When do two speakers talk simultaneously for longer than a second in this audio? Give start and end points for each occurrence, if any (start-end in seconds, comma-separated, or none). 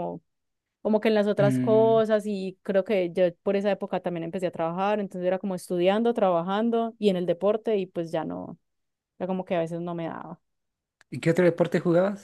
none